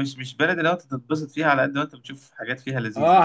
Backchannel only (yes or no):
no